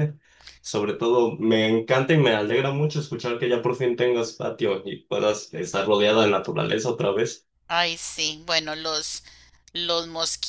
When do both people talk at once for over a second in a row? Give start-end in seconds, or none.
none